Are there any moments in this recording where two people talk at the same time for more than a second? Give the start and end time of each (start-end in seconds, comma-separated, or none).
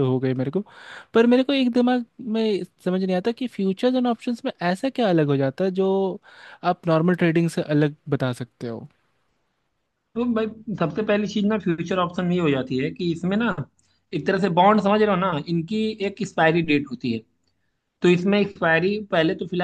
none